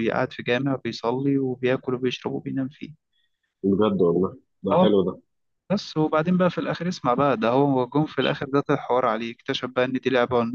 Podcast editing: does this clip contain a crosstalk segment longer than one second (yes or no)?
no